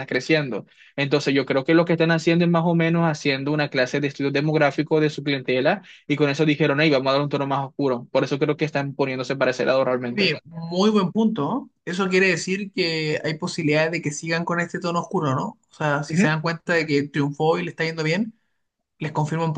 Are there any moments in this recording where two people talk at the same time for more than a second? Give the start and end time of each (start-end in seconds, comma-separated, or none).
none